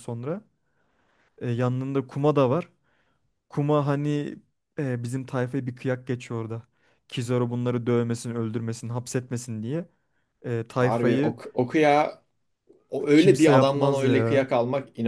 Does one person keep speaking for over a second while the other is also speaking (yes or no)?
yes